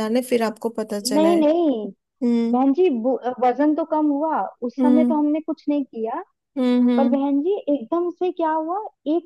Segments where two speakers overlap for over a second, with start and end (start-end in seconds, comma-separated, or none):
none